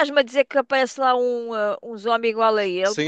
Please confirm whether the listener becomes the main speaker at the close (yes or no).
yes